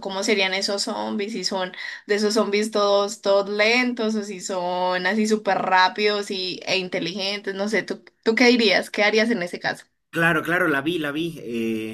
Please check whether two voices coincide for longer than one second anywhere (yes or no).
no